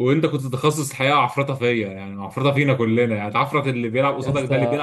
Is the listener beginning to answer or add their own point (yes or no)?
no